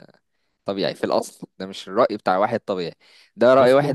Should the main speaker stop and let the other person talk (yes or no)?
no